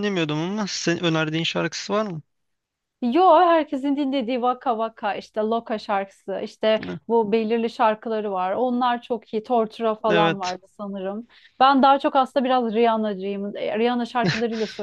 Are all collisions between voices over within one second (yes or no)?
yes